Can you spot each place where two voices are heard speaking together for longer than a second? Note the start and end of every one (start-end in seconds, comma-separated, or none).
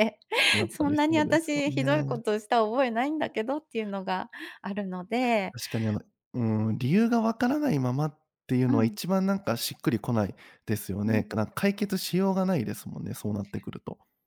0.7-2.2